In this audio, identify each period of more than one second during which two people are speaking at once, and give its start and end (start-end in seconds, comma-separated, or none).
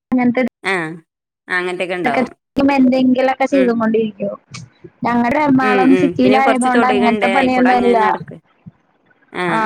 5.7-8.0